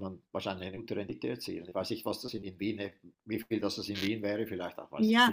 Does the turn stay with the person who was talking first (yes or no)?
no